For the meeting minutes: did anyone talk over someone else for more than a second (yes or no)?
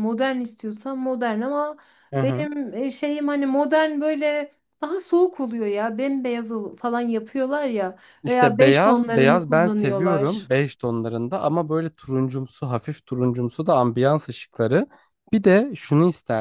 yes